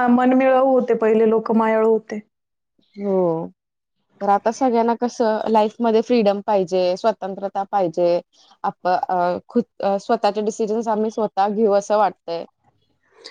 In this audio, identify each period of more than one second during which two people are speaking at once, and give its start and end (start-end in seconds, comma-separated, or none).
none